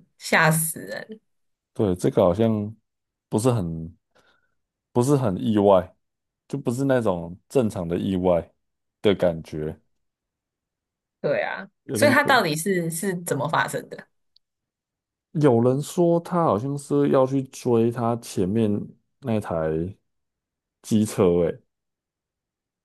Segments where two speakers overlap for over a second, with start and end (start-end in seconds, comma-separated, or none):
none